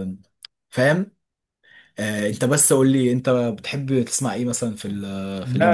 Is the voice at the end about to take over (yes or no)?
yes